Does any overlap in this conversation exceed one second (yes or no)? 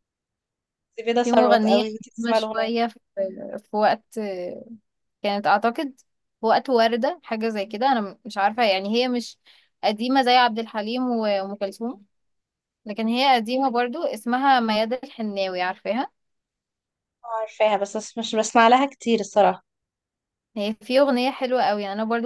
yes